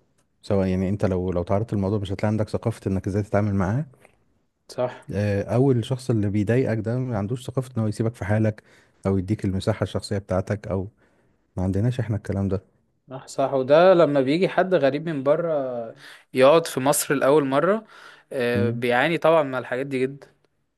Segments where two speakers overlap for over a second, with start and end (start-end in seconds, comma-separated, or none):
none